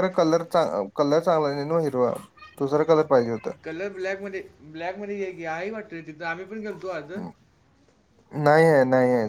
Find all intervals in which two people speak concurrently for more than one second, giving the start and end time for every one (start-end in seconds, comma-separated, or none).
none